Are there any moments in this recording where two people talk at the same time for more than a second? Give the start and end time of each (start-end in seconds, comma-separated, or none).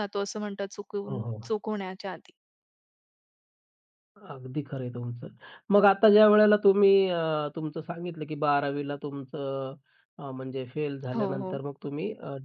none